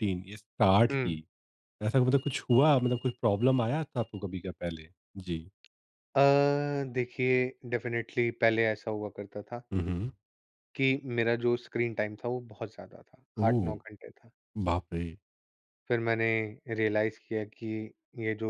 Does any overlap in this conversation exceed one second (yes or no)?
no